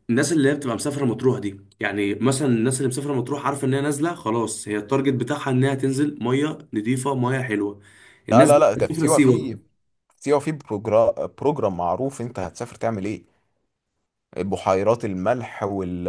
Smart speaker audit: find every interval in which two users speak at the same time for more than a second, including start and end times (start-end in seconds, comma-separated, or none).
8.3-9.6